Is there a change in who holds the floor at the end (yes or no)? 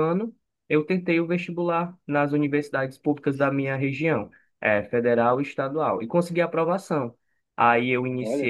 no